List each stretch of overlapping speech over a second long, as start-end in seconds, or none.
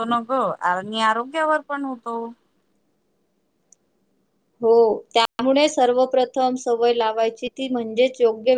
none